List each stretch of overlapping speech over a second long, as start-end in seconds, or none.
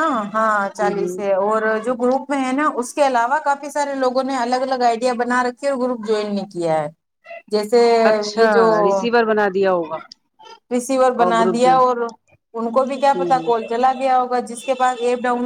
none